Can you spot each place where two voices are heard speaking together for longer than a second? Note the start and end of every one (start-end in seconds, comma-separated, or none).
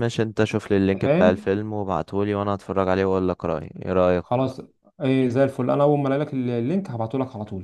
none